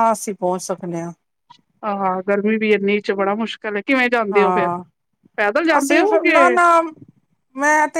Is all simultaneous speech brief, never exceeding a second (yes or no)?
yes